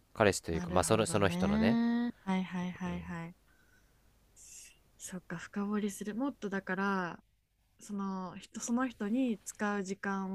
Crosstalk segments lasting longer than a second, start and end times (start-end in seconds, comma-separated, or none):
0.5-1.8